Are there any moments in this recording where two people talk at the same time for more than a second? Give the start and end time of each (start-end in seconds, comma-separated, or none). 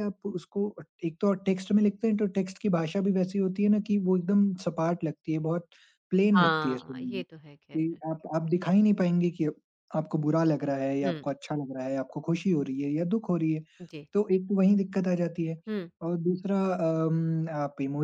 6.4-8.0